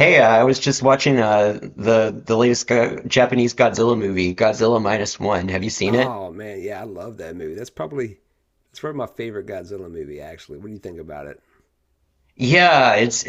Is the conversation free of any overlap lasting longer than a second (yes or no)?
yes